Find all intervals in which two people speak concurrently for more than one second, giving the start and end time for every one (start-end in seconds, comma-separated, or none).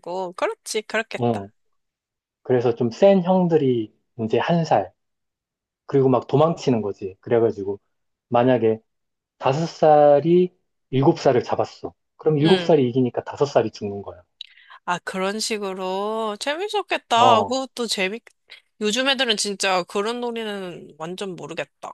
none